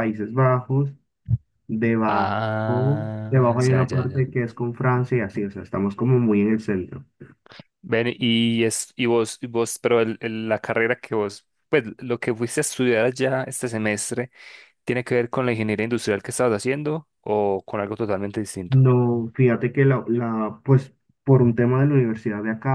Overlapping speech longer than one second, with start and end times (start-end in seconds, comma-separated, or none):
2.1-4.3